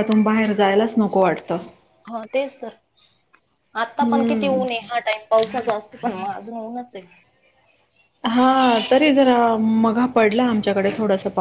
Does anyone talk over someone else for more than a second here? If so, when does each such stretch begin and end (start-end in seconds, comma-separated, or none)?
none